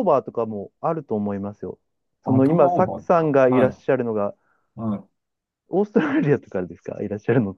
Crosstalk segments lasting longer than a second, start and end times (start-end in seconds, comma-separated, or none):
2.2-3.8